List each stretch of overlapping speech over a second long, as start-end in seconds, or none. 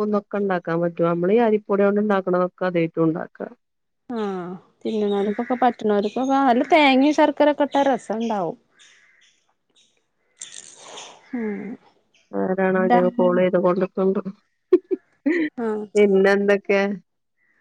none